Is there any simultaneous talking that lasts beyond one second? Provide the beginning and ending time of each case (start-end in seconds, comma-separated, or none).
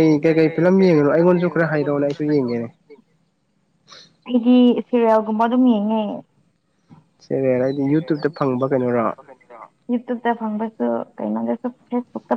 0.6-2.5